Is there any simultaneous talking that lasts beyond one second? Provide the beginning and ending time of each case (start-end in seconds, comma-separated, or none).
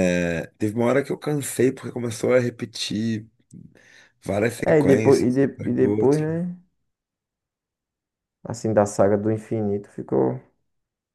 4.7-6.4